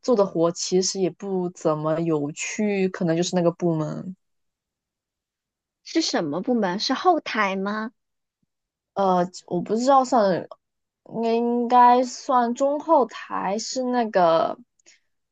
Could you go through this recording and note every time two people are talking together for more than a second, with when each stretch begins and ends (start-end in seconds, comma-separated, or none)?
none